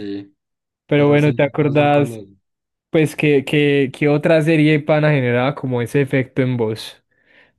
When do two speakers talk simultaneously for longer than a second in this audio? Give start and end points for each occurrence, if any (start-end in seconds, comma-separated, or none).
0.9-2.2